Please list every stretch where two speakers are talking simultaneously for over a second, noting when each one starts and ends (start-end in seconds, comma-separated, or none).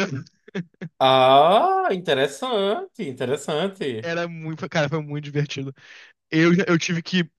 none